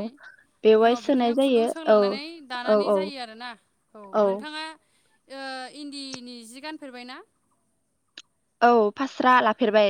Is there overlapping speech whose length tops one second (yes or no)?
yes